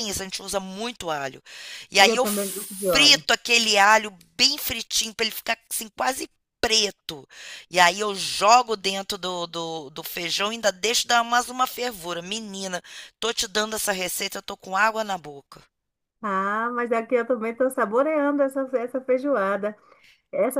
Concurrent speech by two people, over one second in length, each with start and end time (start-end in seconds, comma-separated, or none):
2.0-3.2